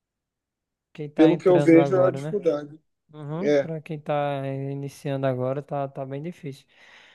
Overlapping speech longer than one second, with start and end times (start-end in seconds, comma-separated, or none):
1.1-2.4